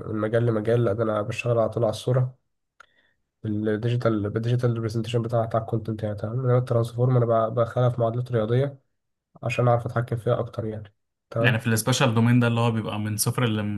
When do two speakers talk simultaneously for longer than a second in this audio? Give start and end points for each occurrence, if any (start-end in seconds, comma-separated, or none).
none